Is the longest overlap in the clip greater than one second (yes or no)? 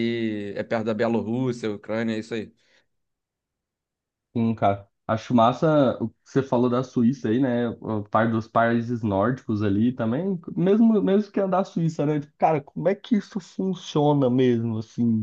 no